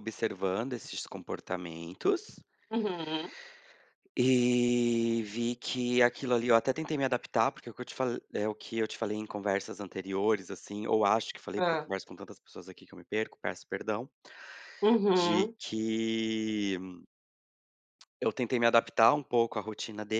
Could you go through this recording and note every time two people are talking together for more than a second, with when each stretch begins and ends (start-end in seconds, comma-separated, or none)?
none